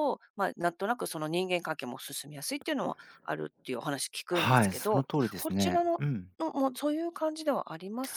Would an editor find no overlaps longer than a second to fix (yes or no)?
no